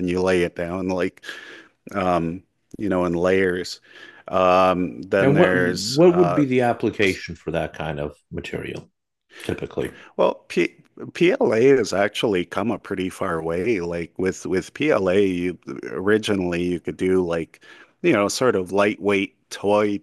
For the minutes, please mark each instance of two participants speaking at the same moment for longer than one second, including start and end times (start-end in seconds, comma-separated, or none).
5.2-6.4